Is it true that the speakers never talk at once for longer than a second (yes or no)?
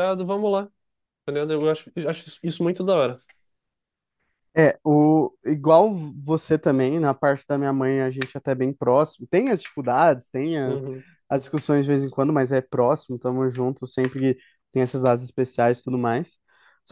yes